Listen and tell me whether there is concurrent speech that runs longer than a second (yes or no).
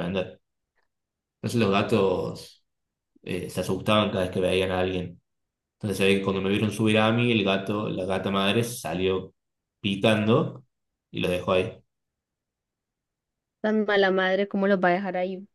no